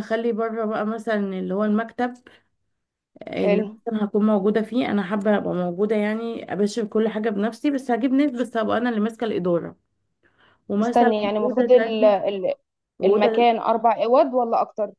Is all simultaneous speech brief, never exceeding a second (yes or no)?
no